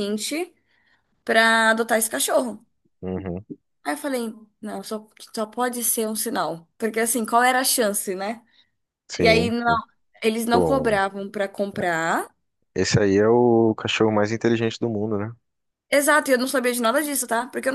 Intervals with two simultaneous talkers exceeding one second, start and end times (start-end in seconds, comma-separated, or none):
none